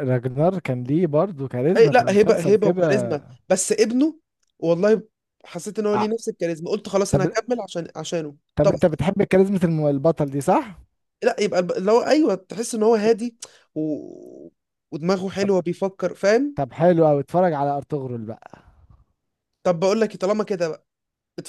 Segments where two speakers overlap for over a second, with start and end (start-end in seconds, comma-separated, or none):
1.8-3.1